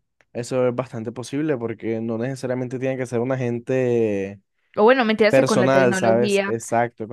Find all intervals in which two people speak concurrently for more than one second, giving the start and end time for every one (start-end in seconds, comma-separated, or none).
5.3-6.5